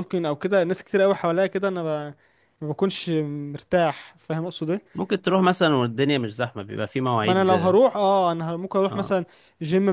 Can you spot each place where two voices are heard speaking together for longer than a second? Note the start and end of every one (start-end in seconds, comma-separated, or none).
none